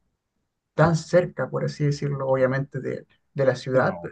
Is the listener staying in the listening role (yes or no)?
yes